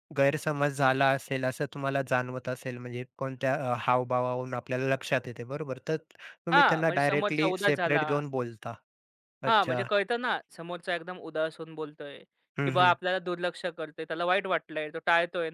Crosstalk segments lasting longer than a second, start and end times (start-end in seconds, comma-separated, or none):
6.5-8.0